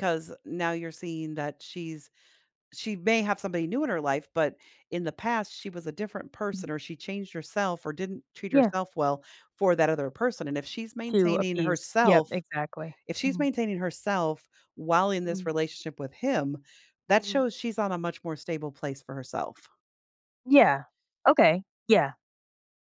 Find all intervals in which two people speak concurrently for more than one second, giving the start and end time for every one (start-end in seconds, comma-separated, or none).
11.1-12.4